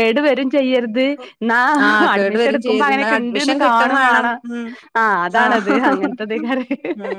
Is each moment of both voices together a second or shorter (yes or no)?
no